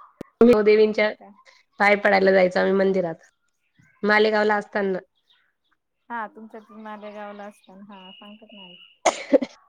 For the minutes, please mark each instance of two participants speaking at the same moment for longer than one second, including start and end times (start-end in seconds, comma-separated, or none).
none